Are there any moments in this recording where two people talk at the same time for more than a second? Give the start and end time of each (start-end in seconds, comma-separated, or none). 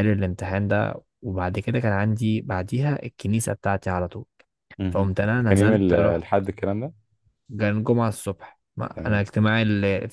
4.9-6.3